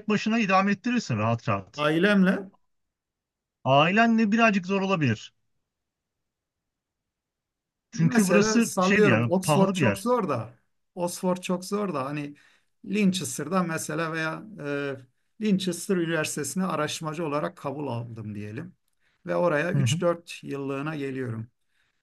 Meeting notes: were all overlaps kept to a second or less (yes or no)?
no